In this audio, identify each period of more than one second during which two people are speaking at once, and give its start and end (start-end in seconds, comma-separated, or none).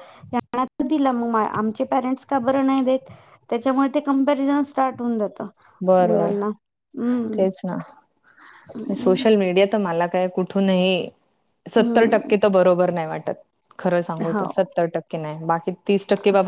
none